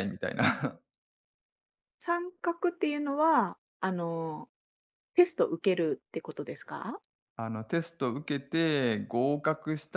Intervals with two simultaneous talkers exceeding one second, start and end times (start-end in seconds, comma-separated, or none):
none